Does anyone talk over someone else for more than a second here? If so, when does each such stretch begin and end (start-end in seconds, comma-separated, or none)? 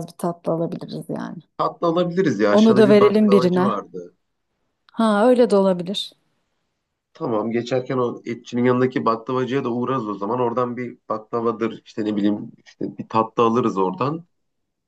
2.5-3.7